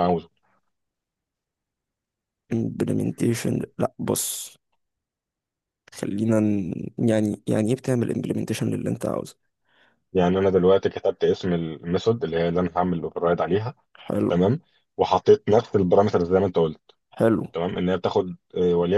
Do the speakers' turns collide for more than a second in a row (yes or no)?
no